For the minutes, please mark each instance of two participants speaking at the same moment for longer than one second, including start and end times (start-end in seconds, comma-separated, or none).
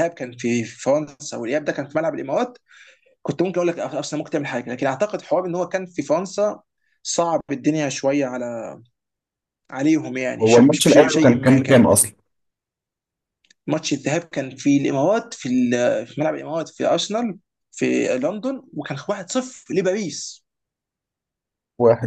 10.4-11.9